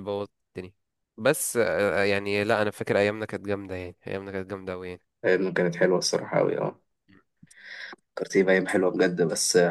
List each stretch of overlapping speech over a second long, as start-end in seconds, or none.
none